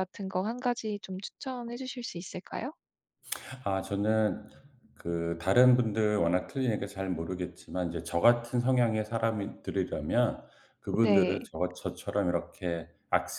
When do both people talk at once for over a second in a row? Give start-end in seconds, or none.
none